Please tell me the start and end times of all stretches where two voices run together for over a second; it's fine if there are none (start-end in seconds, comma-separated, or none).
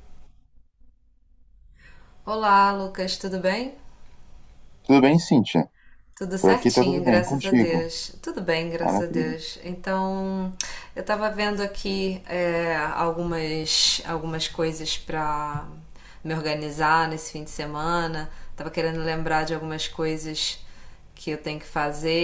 6.4-7.9